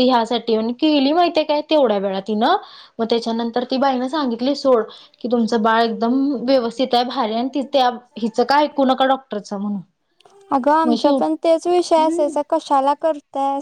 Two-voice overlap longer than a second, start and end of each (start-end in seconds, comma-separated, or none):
none